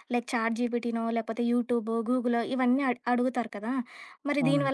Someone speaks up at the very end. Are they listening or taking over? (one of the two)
listening